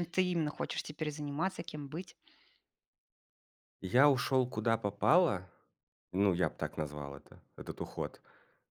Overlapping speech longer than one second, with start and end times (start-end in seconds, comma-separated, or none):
none